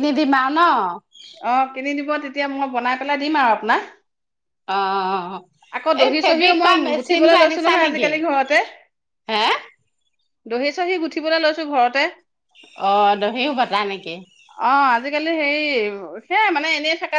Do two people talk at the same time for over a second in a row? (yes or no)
yes